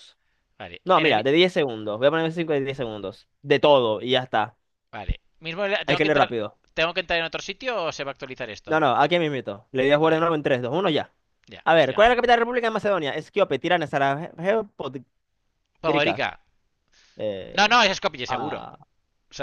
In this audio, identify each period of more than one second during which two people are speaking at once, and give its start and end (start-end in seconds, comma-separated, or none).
none